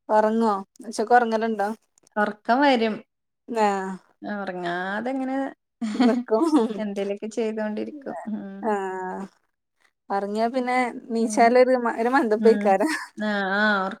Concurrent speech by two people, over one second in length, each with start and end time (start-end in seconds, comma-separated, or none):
none